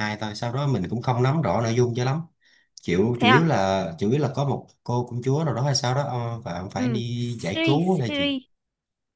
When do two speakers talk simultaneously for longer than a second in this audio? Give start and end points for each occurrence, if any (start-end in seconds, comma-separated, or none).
6.8-8.4